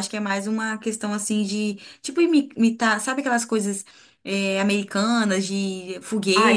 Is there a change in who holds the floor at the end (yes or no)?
yes